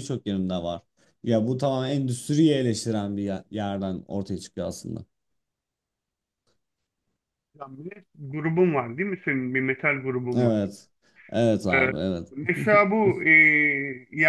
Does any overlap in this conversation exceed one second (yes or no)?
no